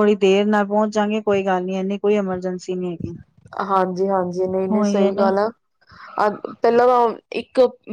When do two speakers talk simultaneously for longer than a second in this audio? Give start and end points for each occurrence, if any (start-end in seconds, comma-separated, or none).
none